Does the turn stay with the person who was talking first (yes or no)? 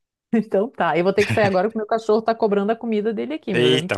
no